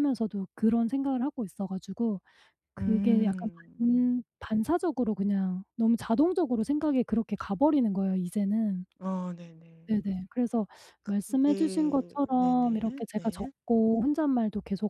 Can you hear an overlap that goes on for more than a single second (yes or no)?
yes